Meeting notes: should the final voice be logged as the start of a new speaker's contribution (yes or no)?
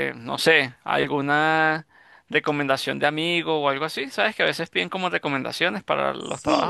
yes